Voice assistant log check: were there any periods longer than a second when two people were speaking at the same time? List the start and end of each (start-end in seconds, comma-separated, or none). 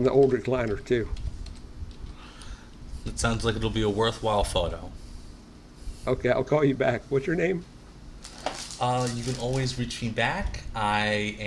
none